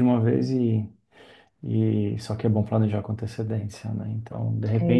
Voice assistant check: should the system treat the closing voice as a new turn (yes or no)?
no